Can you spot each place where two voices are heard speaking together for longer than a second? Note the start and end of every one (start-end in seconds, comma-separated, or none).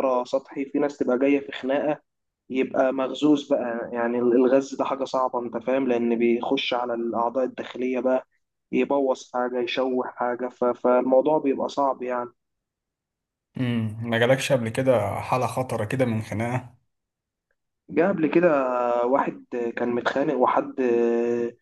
none